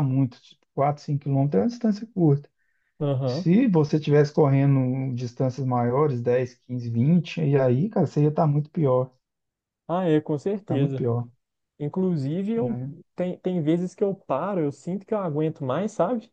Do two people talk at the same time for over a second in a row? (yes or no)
no